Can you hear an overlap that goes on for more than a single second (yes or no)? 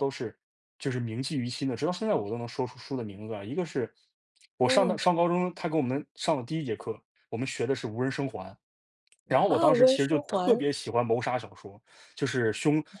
yes